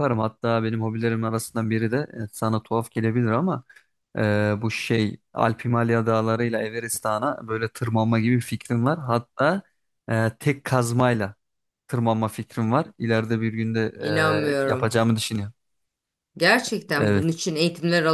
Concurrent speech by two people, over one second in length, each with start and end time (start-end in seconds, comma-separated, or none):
none